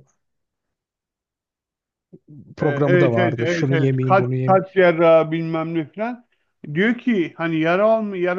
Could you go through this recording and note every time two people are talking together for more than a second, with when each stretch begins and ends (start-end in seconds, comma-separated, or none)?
2.6-4.6